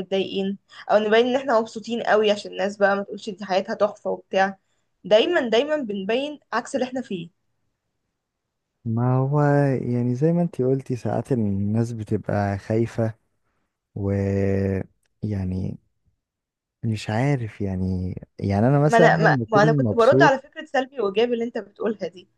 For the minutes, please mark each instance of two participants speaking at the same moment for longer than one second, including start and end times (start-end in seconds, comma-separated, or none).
18.9-20.4